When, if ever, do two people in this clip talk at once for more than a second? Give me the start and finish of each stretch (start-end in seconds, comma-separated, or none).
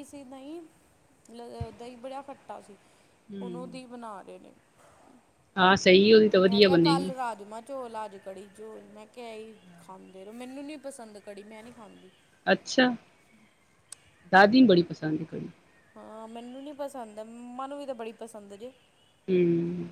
none